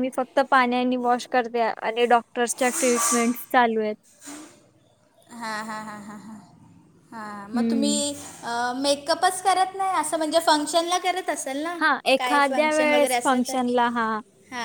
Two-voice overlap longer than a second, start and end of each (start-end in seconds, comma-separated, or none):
12.2-13.6